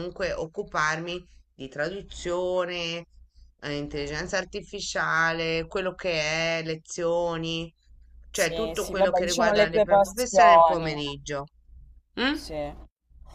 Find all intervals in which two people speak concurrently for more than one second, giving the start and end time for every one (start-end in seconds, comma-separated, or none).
8.3-11.0